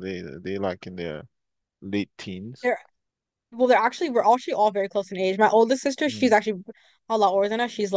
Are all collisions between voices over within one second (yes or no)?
yes